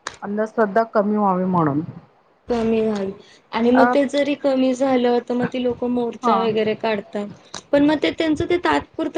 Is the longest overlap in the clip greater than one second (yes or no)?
no